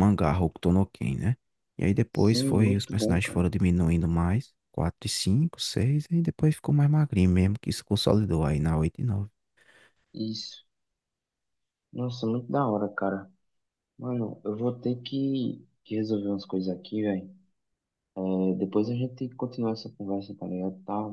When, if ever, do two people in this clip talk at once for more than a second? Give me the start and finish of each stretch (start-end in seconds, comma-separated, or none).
2.1-3.5